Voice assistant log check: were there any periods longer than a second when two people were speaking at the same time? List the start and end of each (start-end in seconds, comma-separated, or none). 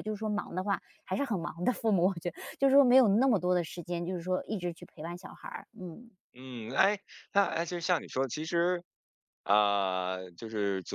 none